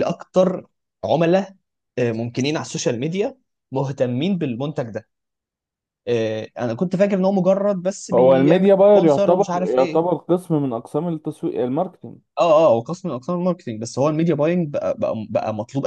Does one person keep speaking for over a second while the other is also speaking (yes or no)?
yes